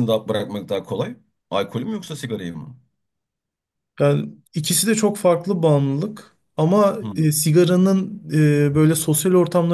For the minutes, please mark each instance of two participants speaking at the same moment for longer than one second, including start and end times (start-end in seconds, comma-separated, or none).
none